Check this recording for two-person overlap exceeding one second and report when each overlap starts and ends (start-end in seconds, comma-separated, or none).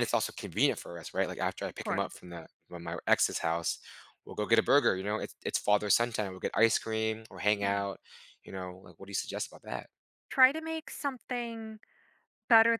none